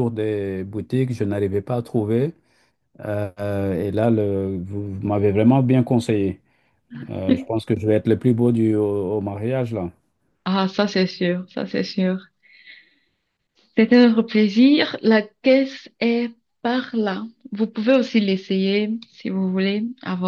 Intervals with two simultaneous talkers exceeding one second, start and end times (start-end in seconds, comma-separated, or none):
none